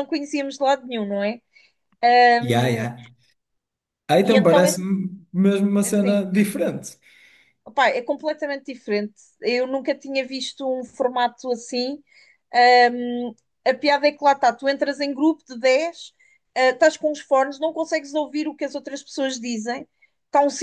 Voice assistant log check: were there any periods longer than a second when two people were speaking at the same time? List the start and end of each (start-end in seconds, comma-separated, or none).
none